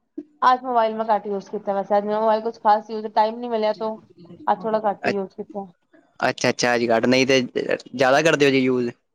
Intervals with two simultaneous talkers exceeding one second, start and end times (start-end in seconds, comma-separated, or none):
none